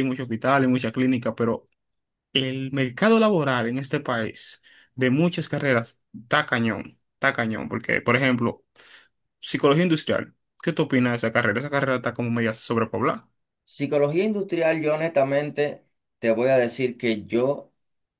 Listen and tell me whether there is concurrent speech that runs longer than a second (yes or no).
no